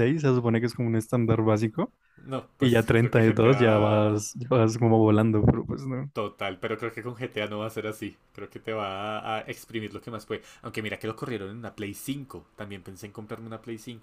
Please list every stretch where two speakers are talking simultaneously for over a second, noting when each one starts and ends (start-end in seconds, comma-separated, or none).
2.6-4.2